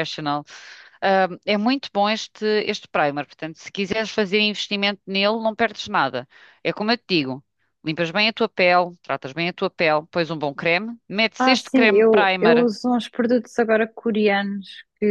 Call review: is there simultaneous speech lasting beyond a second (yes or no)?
yes